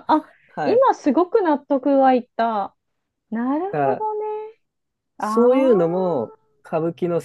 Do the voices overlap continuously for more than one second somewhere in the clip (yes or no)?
yes